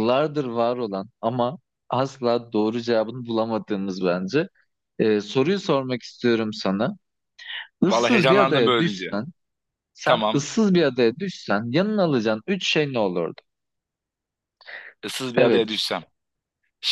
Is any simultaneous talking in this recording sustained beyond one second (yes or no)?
yes